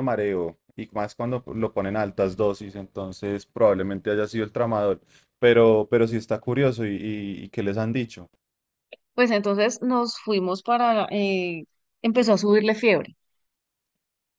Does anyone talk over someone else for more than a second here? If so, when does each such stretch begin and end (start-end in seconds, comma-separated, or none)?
none